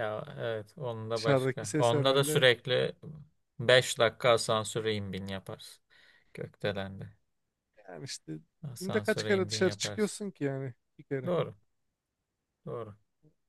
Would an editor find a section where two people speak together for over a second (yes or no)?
yes